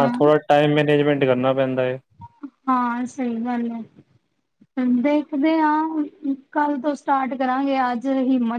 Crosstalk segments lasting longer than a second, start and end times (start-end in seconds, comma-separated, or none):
none